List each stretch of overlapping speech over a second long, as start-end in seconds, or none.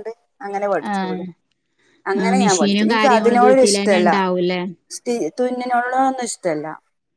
2.2-4.1